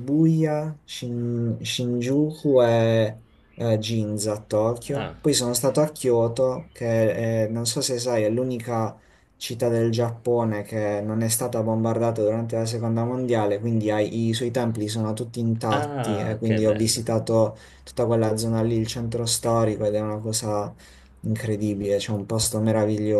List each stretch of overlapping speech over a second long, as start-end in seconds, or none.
15.7-17.0